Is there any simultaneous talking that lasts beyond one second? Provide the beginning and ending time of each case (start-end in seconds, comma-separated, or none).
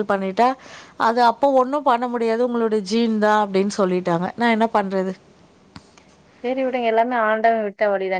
none